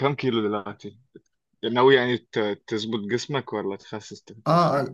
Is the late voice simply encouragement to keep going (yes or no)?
no